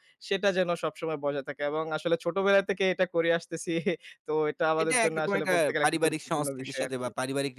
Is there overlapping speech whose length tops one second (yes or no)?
yes